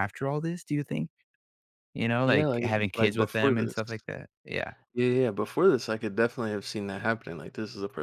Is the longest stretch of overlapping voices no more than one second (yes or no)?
no